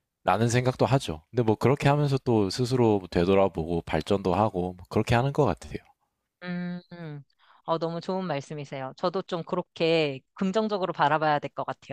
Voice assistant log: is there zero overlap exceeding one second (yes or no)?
yes